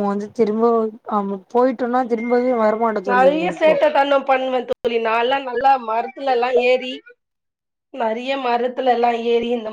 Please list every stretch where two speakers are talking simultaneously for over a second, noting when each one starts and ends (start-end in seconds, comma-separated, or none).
none